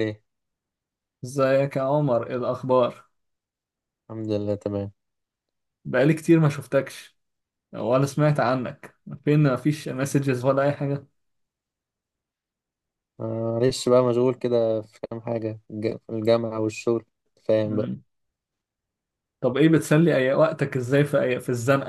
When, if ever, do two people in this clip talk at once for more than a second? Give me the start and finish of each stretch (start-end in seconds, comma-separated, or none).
none